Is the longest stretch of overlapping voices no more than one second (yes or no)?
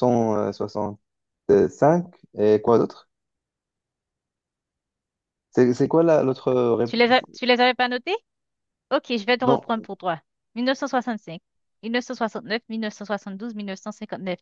yes